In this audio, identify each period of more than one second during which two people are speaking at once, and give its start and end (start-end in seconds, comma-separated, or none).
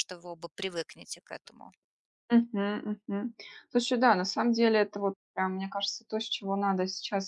none